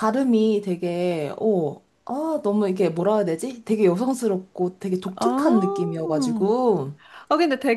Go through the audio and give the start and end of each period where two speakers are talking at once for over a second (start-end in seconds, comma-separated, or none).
5.2-6.5